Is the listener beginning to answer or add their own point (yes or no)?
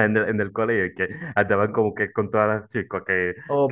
yes